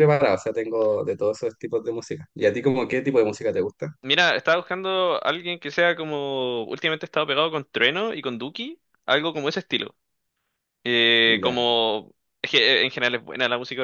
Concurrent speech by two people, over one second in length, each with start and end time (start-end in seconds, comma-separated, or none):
none